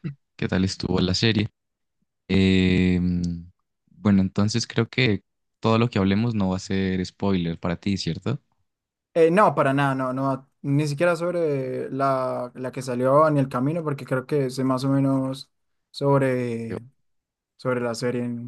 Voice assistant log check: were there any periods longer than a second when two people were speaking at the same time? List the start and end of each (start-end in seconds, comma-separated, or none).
none